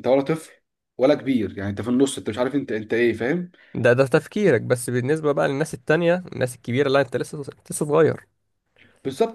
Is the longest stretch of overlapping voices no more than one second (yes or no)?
yes